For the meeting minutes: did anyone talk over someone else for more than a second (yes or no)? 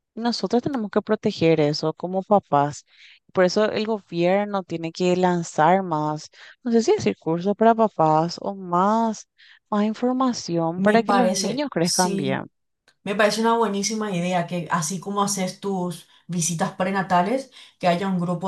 yes